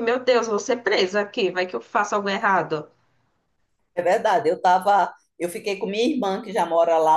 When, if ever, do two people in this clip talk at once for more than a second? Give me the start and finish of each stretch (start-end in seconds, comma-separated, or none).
none